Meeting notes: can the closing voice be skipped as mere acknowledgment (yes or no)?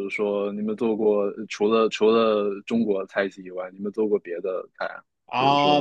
no